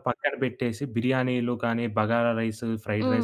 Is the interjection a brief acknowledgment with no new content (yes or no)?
yes